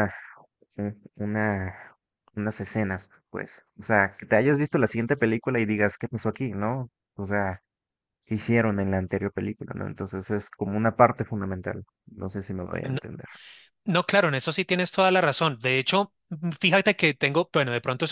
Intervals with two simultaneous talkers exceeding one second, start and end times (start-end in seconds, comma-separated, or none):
none